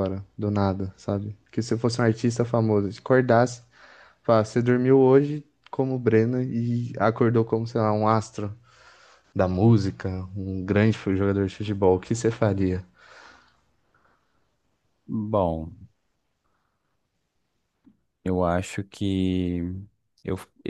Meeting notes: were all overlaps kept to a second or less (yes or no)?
yes